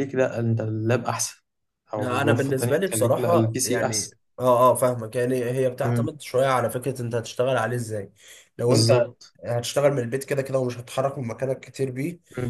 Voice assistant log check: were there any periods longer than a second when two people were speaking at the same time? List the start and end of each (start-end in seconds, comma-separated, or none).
1.9-4.2